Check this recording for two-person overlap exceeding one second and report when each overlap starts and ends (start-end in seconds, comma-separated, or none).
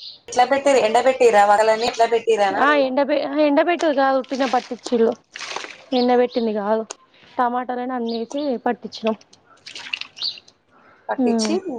none